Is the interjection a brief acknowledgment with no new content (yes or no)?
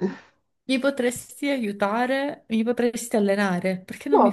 no